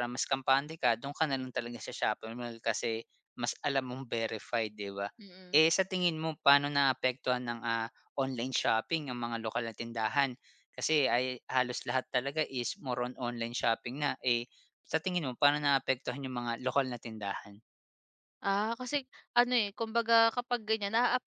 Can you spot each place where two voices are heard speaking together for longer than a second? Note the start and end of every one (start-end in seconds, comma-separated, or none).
none